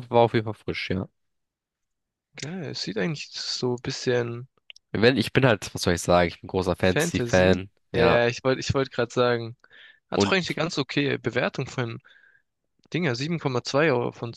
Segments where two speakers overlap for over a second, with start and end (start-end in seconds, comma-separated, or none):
6.8-8.2